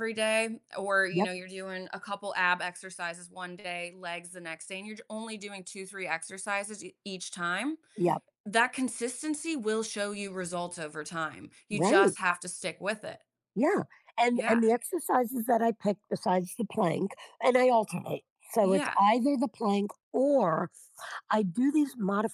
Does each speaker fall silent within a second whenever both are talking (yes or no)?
yes